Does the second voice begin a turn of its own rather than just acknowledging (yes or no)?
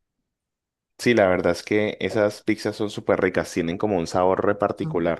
yes